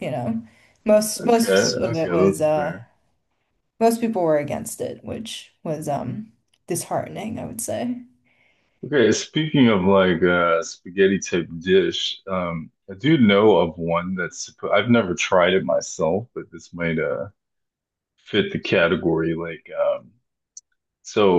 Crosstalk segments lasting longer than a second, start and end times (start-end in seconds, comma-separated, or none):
1.2-2.8